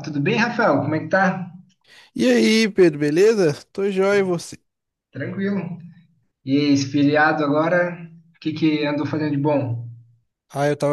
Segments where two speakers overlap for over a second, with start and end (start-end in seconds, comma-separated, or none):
none